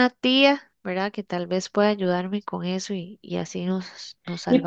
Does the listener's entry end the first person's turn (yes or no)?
yes